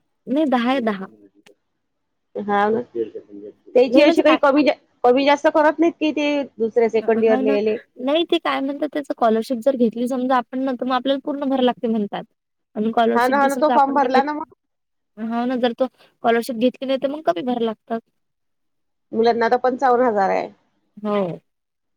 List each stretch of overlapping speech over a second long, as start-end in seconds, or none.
13.1-14.4